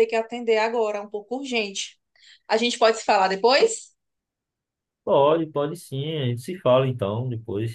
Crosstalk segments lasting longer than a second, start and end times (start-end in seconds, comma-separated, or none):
none